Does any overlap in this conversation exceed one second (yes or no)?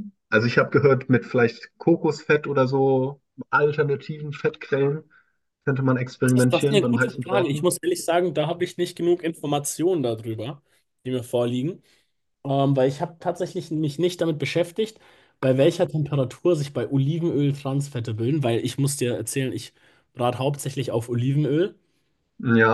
yes